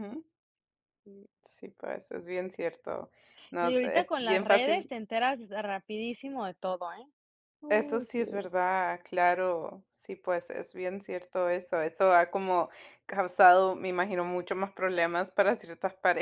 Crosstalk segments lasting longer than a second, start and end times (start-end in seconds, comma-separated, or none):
3.6-4.9